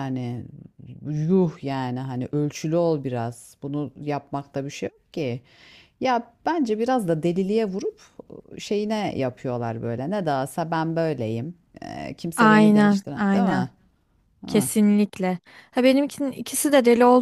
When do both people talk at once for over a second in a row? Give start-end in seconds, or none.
12.4-13.7